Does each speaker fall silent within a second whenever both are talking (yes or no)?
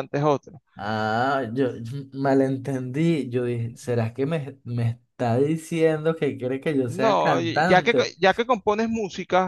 no